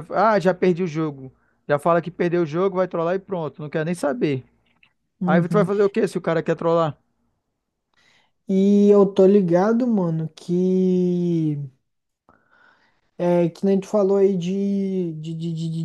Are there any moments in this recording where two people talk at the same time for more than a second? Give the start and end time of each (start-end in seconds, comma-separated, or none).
none